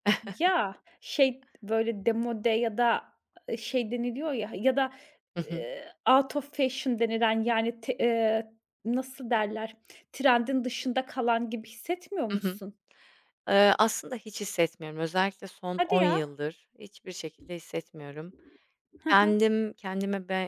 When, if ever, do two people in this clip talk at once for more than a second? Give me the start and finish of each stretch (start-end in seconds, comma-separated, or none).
none